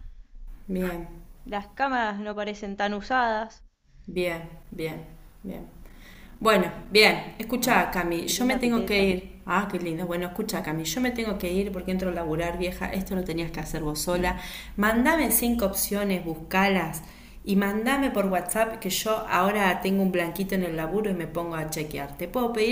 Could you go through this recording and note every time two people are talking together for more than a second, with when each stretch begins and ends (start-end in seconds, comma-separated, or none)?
7.6-9.2